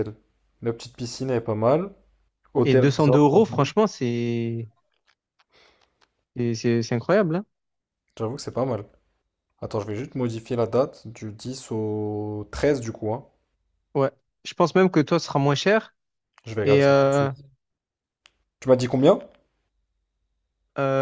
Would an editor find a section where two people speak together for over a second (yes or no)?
no